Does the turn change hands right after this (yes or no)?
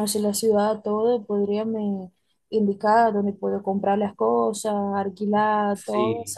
no